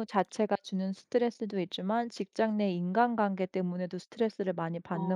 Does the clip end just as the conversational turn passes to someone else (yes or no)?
yes